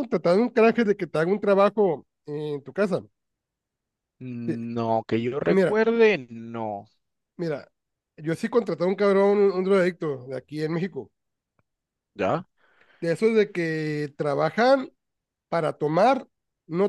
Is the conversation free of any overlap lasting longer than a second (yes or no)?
yes